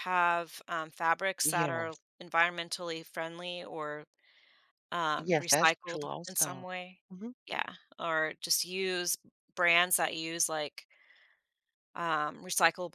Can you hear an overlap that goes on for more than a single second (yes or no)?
yes